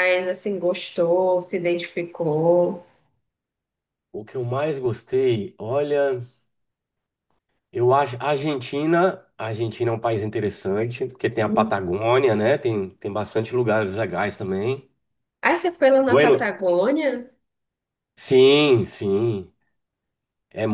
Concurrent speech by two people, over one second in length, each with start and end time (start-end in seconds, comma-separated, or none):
none